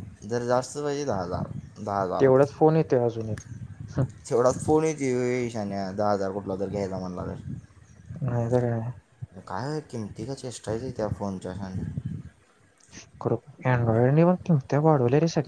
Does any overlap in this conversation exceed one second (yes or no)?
no